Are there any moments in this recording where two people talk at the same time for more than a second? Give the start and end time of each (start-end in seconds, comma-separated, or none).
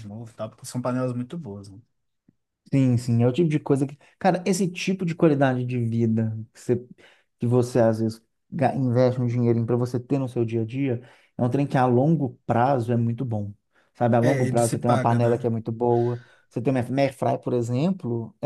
14.2-15.5